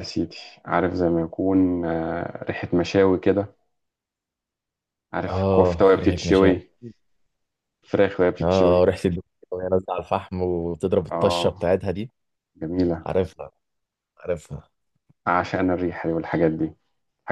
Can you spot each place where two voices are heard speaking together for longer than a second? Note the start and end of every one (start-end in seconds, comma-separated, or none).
5.3-6.5